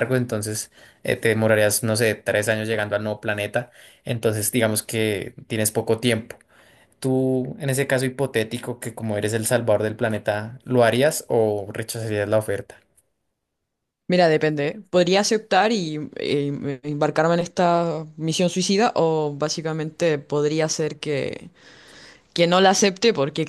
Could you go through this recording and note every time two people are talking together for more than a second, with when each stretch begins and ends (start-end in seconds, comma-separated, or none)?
none